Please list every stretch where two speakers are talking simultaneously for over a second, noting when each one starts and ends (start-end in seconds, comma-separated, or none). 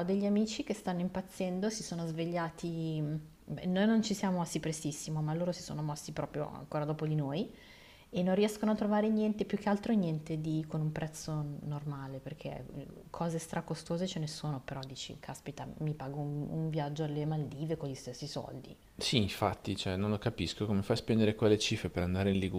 none